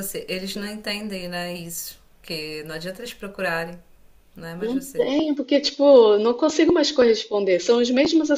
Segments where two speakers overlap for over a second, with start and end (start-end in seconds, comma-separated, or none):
none